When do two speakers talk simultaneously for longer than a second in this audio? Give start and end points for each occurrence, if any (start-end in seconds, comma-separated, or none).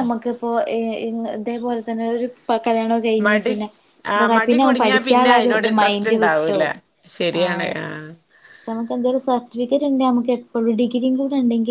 4.2-6.7